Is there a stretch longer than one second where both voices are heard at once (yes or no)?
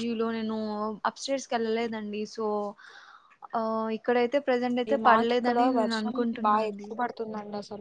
yes